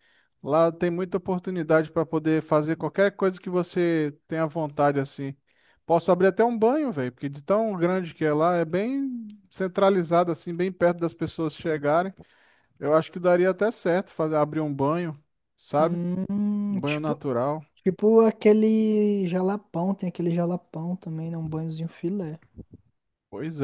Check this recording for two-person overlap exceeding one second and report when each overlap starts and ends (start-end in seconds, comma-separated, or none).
none